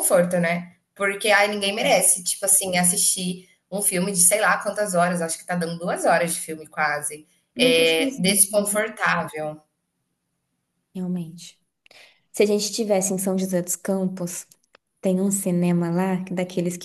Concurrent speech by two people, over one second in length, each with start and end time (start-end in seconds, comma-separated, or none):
7.5-8.9